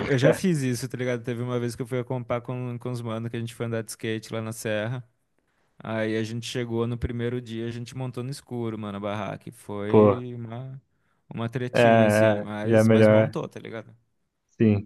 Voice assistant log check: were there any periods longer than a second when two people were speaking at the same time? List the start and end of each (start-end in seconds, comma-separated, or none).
11.7-13.4